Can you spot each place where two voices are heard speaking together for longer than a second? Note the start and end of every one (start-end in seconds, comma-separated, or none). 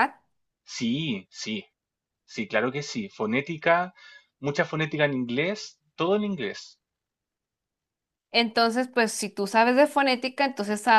none